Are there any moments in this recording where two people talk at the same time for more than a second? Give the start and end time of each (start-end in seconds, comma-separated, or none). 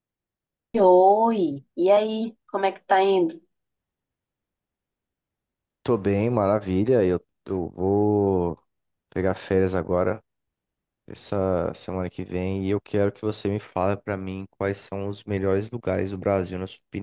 none